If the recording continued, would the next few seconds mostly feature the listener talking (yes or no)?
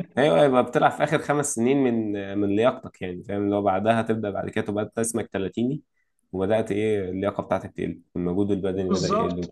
yes